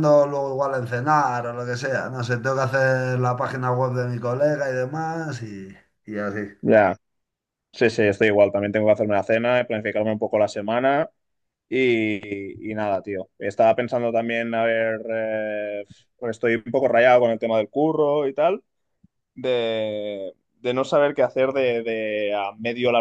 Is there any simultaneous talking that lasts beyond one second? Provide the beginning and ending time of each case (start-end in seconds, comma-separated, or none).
none